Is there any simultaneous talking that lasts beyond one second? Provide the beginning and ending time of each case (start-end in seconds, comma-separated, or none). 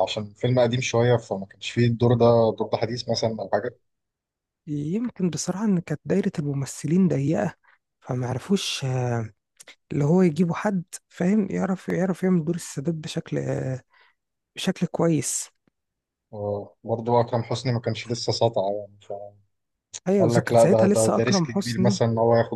20.2-22.0